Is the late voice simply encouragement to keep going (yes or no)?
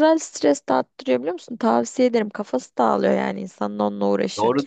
no